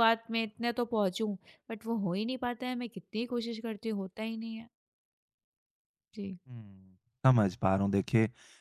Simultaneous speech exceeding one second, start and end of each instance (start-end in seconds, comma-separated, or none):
none